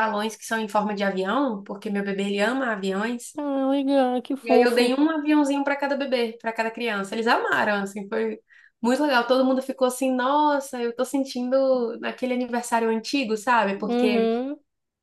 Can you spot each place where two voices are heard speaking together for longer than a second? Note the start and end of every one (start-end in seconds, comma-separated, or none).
none